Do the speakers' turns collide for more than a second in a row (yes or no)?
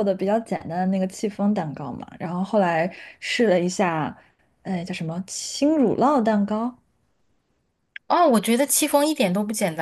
no